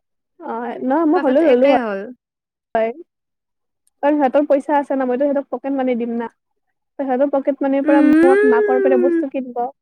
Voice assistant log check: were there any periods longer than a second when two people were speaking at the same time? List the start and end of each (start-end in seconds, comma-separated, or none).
7.9-9.2